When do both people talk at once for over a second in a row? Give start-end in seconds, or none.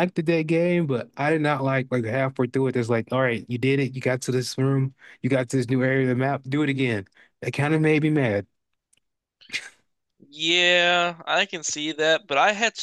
none